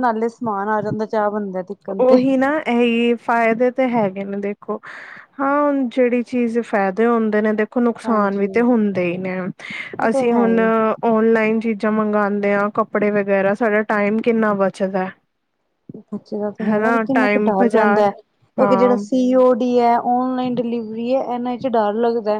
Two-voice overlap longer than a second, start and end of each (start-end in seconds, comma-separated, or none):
none